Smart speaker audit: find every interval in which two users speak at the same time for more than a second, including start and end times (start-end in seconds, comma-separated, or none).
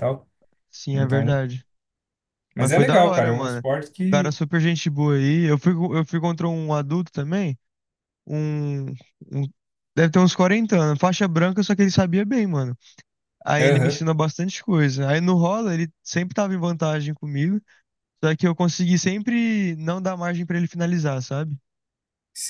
2.6-4.3